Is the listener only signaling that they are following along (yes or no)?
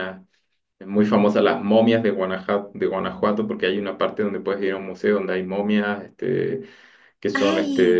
yes